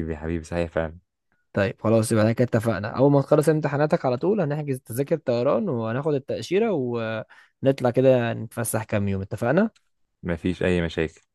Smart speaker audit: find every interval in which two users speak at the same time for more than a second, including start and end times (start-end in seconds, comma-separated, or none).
none